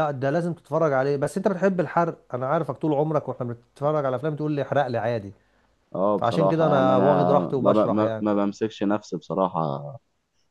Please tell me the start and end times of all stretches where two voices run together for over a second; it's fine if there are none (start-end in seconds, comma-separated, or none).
6.2-8.2